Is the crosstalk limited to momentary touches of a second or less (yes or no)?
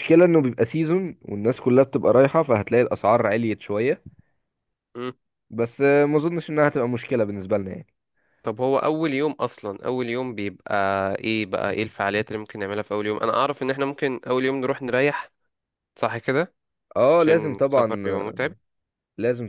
no